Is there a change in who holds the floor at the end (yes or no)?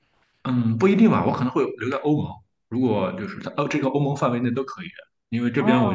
no